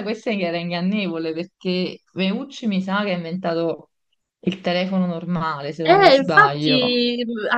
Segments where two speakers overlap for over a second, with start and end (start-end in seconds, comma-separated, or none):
5.8-7.0